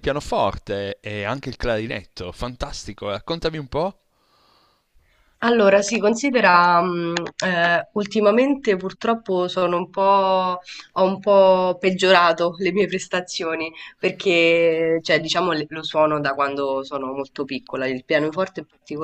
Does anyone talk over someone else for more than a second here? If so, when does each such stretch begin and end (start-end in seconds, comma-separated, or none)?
none